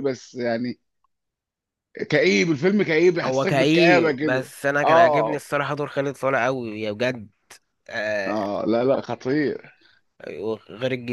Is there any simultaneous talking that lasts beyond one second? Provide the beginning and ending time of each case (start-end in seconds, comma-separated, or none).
3.2-5.4